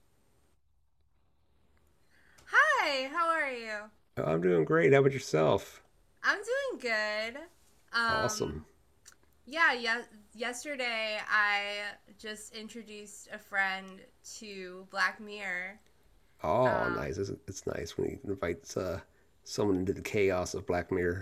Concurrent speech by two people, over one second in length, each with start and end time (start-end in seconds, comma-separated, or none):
none